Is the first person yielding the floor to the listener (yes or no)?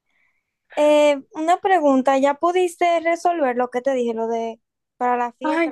yes